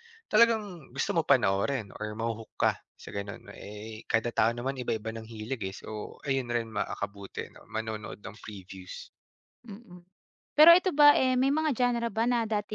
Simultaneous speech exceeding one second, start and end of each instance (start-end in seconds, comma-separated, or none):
none